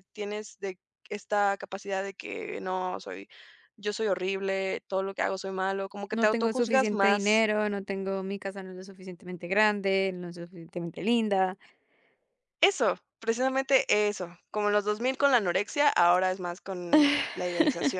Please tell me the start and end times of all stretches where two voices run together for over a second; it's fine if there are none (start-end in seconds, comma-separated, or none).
6.2-7.5